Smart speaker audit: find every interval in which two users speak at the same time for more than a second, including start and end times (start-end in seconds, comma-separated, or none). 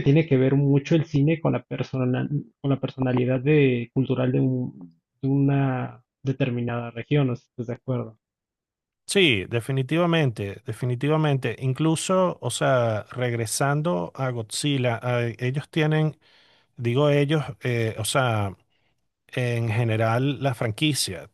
none